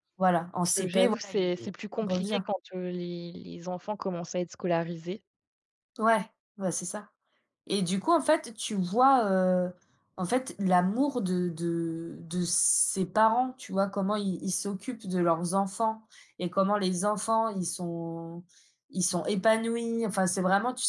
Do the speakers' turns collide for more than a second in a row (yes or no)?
yes